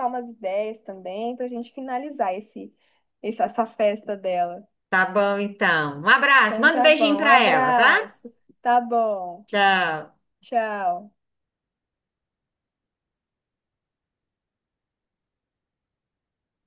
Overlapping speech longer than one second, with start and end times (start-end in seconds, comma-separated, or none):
6.4-8.1